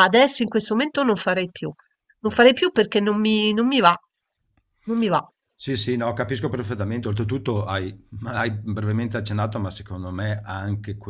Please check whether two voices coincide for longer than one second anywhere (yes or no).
no